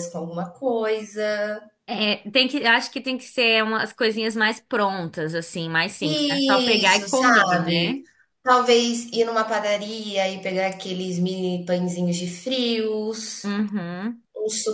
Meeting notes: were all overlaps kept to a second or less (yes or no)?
no